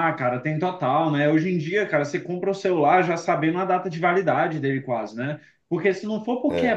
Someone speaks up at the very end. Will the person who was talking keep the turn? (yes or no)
yes